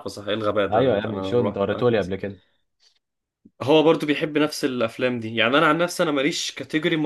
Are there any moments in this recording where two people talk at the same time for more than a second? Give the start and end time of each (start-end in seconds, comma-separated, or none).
0.7-2.1